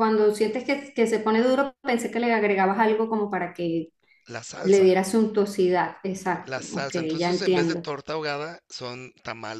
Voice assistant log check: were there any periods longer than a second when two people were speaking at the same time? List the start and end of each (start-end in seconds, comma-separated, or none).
6.4-7.9